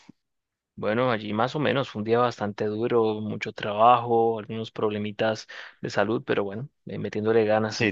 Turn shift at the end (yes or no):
yes